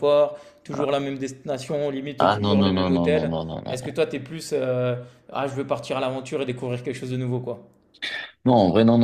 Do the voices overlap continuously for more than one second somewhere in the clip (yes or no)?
yes